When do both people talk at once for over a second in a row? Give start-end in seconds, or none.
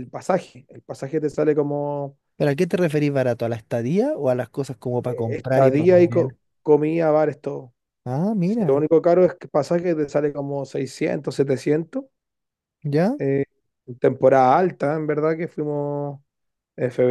5.1-6.4